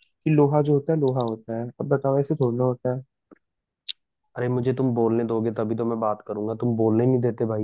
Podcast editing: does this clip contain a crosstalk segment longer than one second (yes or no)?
no